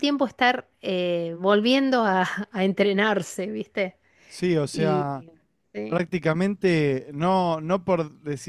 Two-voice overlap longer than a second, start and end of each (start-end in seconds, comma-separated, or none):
none